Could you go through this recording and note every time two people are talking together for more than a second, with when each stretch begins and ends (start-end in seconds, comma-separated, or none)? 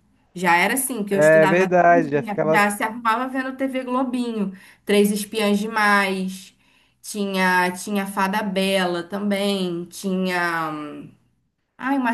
1.1-2.6